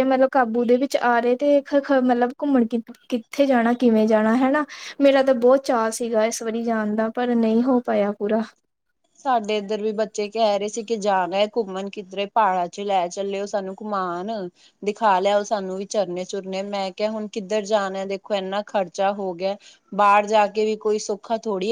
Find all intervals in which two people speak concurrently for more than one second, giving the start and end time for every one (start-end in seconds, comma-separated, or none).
none